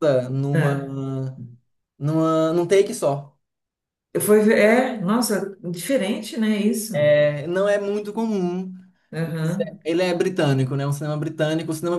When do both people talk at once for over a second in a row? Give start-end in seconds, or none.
none